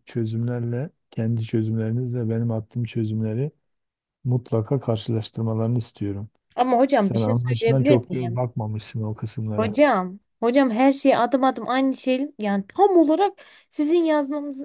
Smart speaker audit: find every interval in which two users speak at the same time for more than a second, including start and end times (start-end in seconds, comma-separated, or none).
7.0-8.4